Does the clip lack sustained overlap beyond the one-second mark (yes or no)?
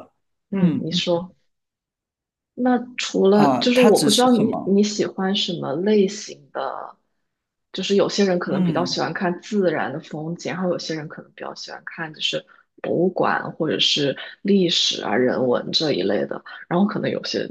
no